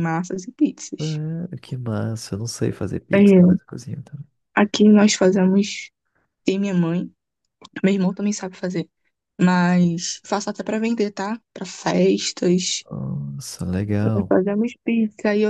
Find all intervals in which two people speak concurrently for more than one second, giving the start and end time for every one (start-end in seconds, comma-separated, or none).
none